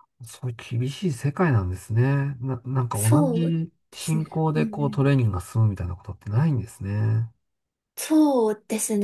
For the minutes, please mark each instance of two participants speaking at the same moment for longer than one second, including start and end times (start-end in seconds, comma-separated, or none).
2.9-5.1